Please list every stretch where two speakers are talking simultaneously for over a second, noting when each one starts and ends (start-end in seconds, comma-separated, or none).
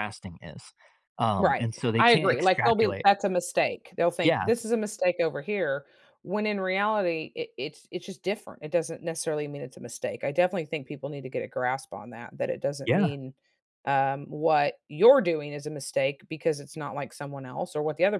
1.4-3.1